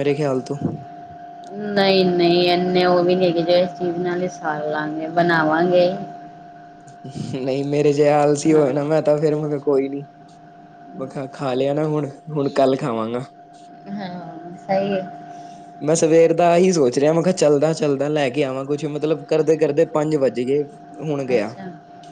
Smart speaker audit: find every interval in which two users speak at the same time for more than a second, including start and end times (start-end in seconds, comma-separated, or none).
none